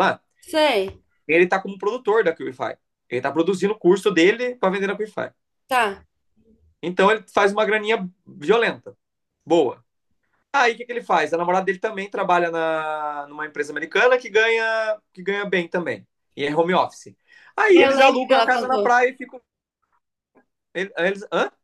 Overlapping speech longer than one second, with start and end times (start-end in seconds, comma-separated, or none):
17.7-18.9